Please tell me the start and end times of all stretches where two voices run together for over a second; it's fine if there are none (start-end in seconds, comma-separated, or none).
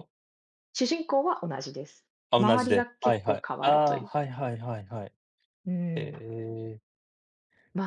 2.3-4.1